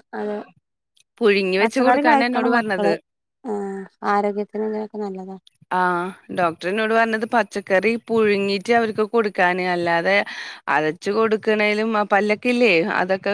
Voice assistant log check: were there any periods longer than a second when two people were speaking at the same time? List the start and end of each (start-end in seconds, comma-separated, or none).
1.6-2.9